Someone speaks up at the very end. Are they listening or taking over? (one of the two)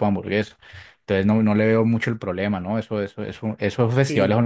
taking over